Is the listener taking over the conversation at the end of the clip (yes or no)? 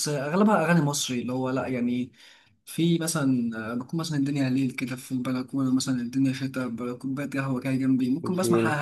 no